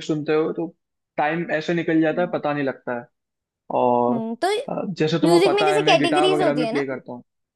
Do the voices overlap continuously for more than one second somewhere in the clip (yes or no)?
yes